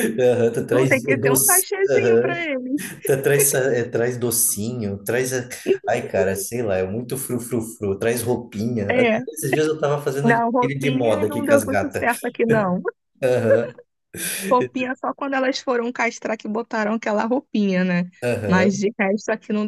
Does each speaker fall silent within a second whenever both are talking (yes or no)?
no